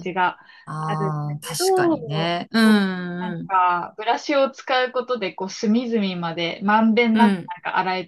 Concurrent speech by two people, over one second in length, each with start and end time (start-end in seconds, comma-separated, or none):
0.8-2.3